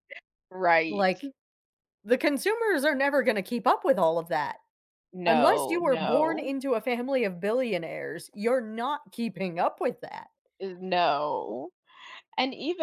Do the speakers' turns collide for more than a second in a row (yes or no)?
yes